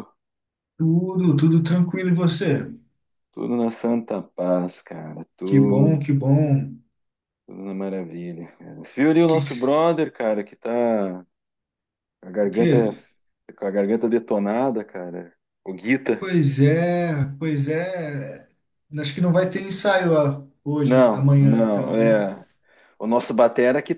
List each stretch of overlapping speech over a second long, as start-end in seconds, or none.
20.9-22.2